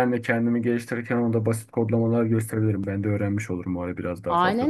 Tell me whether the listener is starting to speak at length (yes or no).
yes